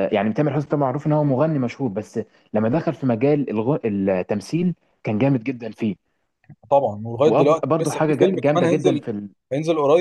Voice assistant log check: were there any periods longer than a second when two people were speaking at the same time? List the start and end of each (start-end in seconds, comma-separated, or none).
7.3-9.0